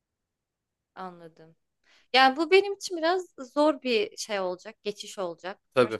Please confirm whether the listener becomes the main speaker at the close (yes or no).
no